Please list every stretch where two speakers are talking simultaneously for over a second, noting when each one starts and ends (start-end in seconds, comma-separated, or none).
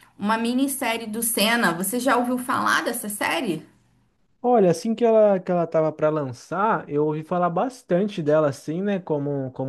none